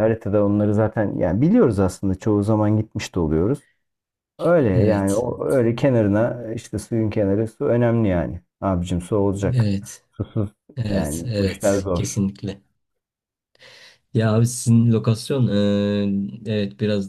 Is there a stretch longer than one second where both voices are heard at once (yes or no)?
yes